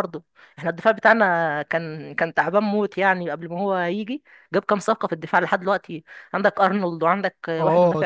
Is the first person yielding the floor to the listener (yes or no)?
yes